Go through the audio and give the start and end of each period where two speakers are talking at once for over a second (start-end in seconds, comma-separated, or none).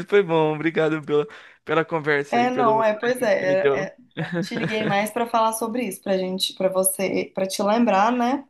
2.3-3.9